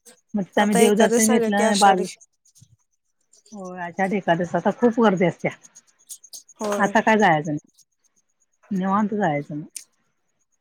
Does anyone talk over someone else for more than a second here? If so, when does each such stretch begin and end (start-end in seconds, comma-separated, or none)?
0.6-2.0